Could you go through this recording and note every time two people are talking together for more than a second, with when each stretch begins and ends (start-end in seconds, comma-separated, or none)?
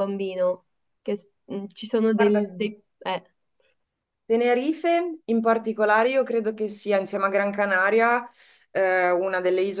none